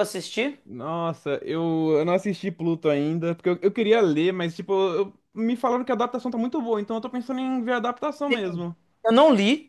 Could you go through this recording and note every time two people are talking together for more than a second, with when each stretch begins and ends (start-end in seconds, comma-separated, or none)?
none